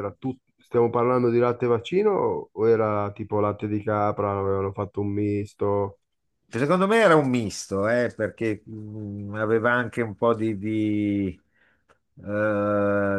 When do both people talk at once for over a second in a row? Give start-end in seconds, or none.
none